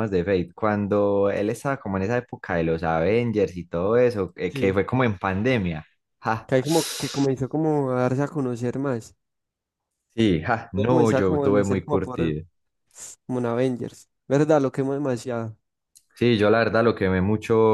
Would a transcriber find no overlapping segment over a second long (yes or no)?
no